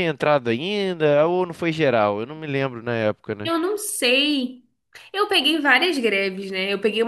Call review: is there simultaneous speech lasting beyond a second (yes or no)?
no